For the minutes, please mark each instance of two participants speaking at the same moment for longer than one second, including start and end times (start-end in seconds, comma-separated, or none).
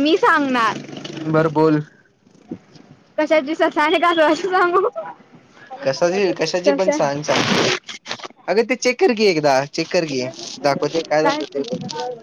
none